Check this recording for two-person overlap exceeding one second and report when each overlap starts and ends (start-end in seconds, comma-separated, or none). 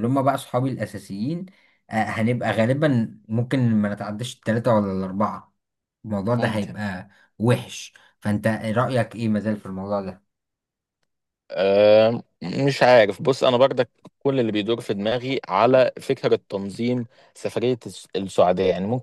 none